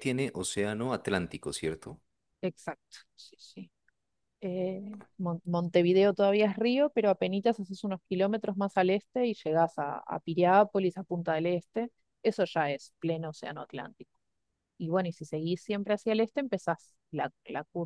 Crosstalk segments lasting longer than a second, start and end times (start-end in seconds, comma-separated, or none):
none